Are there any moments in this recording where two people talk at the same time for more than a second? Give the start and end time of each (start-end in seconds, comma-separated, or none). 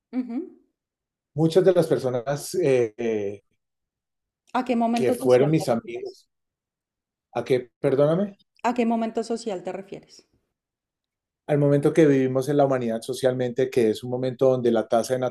4.9-6.2